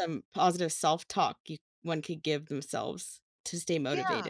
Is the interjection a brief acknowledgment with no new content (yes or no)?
no